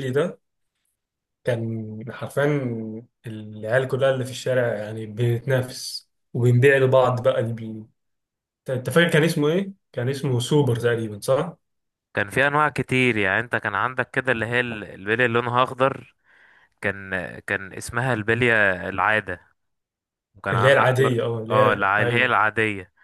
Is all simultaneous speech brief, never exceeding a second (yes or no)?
no